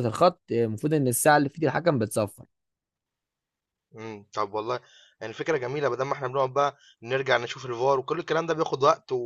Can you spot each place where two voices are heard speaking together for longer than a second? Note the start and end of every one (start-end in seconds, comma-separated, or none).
none